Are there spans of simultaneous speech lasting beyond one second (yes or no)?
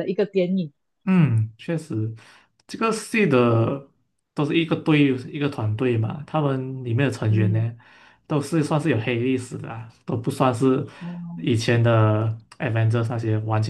no